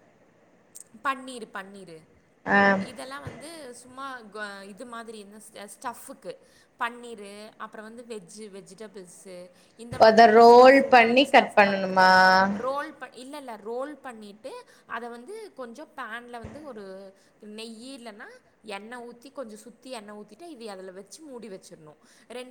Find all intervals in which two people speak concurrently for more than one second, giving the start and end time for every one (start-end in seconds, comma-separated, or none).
10.1-12.1